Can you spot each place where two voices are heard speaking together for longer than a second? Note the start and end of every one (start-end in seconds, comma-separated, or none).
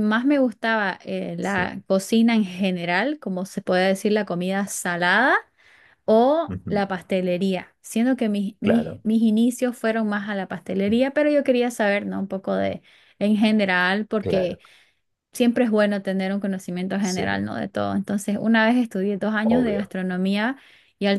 none